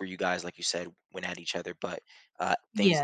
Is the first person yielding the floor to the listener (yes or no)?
yes